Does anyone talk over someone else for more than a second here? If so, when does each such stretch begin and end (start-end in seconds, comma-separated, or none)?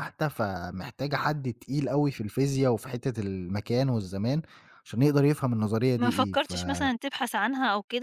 none